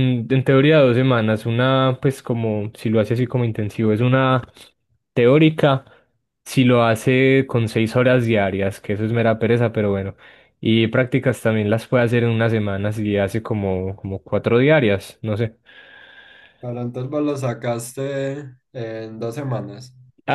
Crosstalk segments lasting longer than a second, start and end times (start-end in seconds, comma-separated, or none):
none